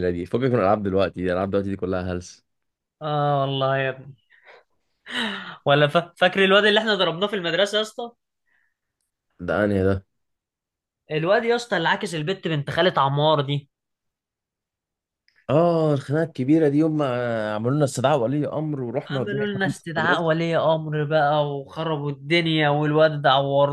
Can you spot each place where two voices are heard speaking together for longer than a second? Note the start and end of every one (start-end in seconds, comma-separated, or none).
19.1-20.3